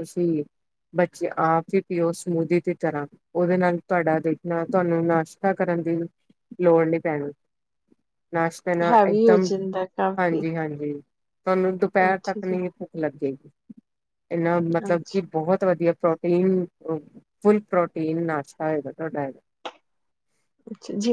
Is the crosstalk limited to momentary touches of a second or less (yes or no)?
yes